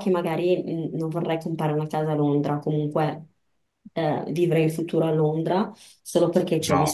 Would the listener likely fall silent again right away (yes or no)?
yes